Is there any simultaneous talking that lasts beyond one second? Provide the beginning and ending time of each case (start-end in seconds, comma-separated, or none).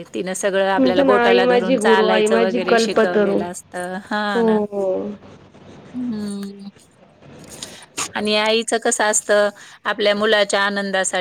0.8-3.4